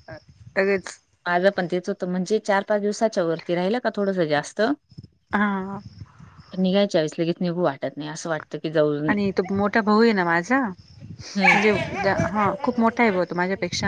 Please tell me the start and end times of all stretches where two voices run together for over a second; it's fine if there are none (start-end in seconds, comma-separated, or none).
none